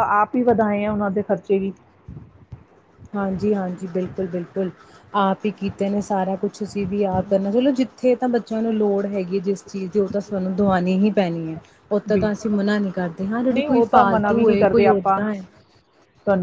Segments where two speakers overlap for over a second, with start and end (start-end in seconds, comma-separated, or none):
13.5-15.2